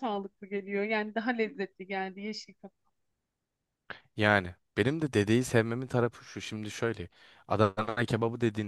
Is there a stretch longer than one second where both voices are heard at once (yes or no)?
no